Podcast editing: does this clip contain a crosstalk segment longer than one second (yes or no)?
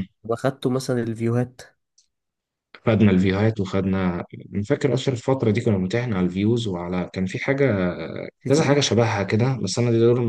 no